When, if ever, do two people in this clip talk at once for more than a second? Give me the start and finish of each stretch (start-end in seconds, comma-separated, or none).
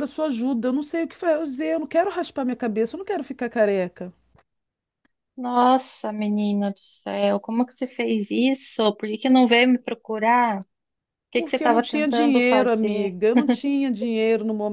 11.3-13.1